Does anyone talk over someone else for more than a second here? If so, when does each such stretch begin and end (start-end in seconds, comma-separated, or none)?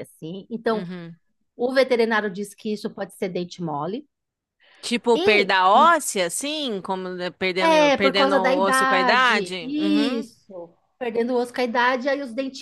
7.6-10.3